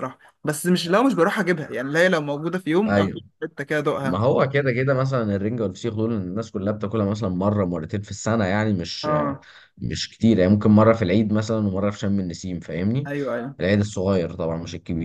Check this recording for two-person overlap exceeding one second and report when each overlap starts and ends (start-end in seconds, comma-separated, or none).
none